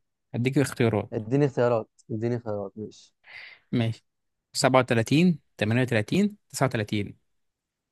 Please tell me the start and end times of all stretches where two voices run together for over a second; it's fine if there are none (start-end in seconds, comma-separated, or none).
none